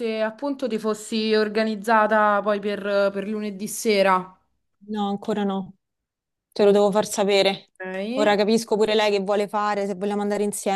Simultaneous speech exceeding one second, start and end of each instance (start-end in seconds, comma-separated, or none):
none